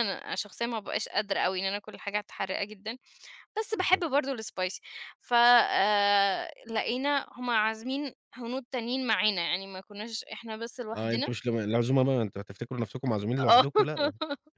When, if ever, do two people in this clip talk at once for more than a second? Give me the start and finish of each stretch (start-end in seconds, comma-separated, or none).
none